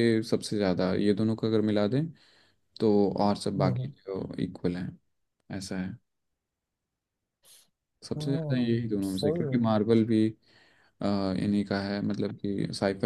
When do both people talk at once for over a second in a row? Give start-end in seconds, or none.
8.2-9.6